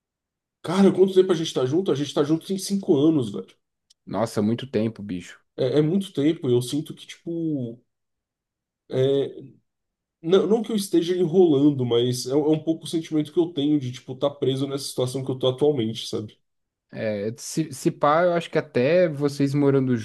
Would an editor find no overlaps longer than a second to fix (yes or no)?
yes